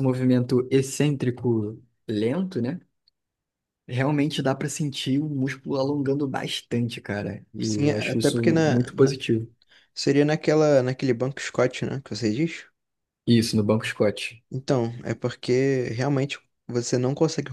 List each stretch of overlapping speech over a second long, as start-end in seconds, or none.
7.6-9.1